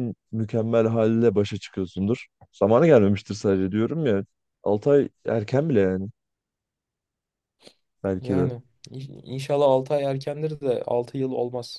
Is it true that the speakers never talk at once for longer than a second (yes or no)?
yes